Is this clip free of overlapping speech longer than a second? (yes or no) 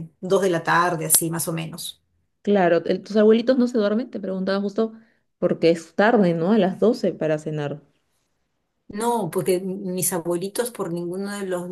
yes